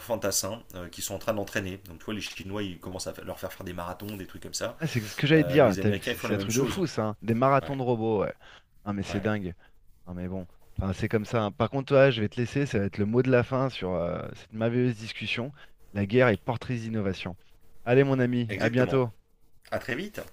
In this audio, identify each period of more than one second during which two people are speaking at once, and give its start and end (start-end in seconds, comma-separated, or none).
5.3-6.8